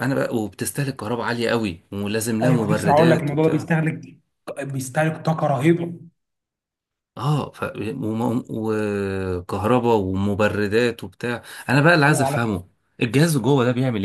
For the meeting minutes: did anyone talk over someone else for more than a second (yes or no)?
yes